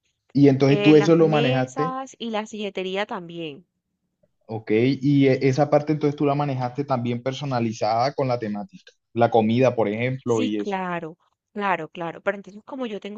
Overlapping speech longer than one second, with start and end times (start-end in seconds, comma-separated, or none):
0.7-2.0